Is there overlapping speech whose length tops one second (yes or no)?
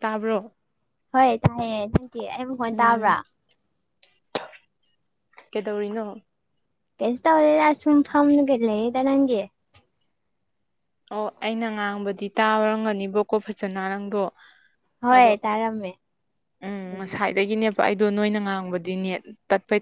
no